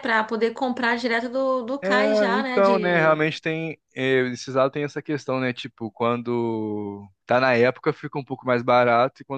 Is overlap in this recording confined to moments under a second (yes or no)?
no